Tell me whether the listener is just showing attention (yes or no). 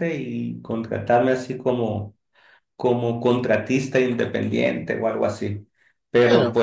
yes